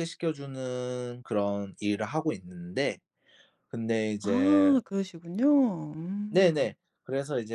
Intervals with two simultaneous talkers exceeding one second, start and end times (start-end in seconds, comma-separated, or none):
none